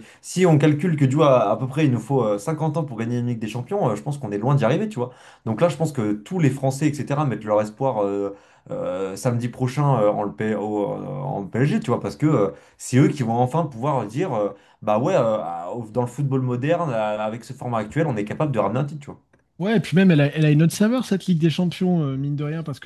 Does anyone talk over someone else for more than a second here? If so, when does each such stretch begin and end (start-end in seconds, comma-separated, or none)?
none